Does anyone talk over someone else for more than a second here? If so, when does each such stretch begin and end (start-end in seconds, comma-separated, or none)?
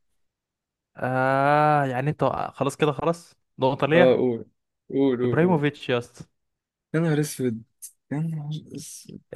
none